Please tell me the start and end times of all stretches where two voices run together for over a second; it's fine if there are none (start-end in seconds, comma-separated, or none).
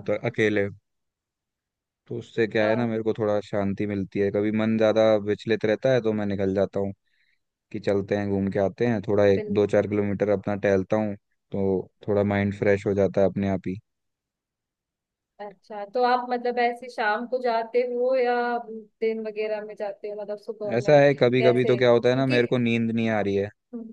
20.8-22.4